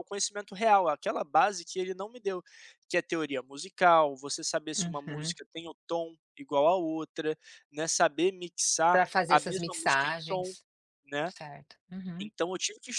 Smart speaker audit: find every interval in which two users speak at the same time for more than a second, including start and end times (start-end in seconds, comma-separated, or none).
8.9-10.6